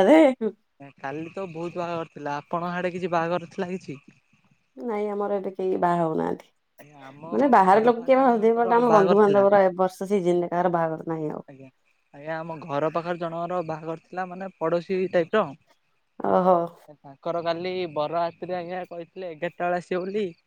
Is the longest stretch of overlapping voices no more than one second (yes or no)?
no